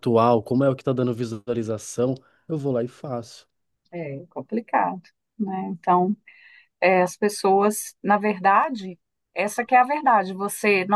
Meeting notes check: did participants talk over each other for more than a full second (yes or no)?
no